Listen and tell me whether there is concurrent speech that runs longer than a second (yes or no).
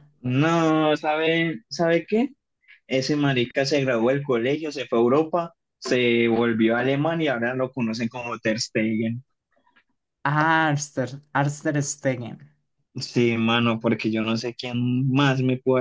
no